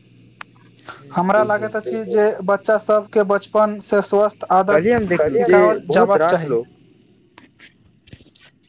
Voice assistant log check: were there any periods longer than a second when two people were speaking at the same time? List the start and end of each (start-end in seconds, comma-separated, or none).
4.7-6.5